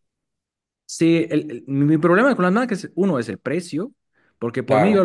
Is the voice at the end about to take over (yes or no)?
no